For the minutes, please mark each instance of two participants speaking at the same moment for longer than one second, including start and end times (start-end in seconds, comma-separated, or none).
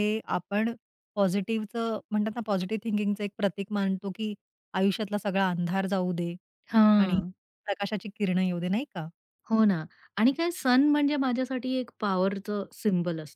none